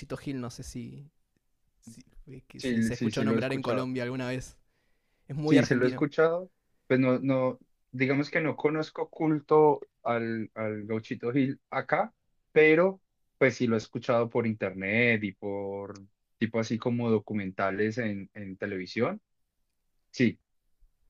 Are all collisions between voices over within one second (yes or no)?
no